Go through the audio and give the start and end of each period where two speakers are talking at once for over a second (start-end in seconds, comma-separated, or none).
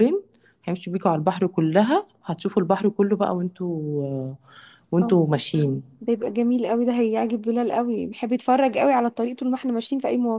none